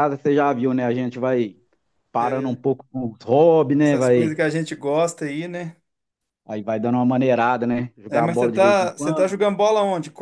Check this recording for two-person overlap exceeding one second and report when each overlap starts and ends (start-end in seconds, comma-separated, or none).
8.1-9.3